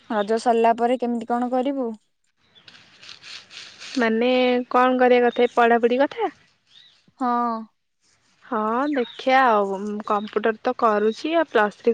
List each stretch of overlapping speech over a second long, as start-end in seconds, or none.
none